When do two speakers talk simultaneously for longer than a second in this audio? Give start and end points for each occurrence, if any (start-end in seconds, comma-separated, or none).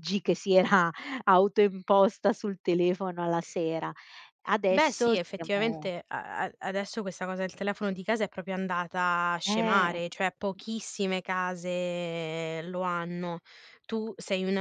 4.7-5.9